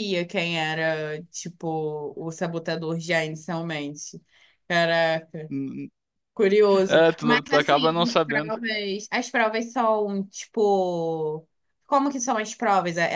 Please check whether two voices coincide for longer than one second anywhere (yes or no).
yes